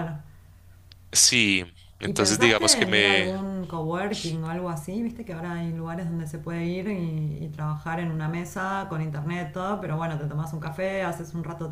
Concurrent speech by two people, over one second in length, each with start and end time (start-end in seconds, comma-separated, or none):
2.0-3.3